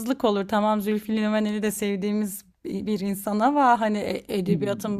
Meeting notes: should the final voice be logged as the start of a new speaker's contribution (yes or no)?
no